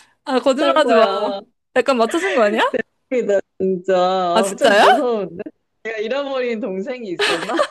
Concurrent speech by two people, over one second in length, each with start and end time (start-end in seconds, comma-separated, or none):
none